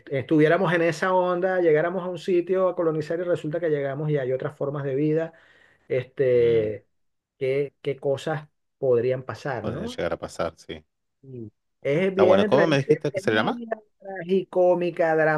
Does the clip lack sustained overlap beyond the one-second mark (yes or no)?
no